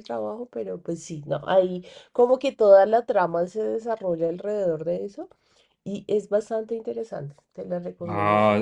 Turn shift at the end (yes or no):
yes